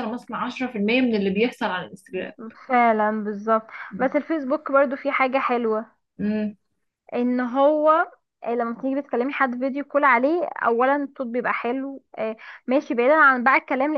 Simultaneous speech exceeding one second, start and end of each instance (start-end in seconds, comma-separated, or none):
none